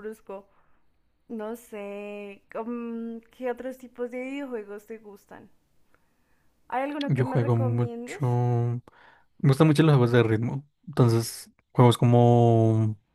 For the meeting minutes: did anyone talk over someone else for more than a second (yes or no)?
yes